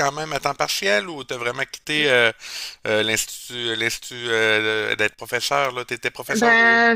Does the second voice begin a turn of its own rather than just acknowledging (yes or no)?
yes